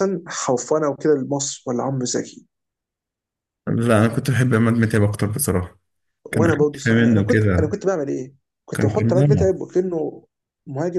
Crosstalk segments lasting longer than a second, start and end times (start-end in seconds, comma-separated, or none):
6.3-7.8